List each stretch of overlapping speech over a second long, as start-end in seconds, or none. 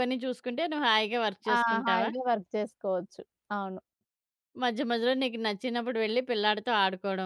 none